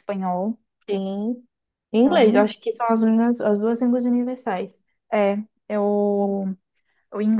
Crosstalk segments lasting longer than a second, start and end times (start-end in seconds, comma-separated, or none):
none